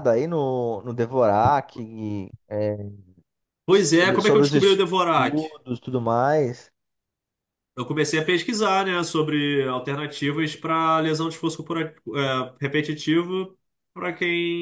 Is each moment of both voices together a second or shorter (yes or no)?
no